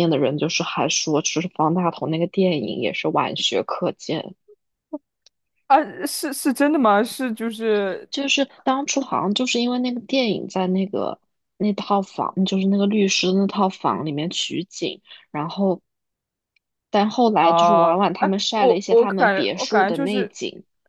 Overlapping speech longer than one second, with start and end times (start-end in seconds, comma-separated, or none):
17.4-20.3